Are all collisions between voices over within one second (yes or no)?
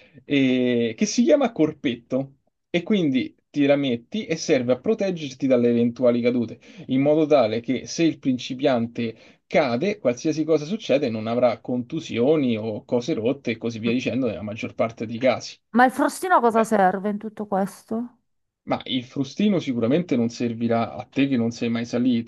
yes